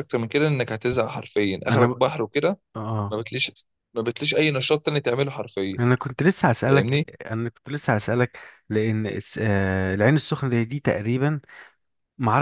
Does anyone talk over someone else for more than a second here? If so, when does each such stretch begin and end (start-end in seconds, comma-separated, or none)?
none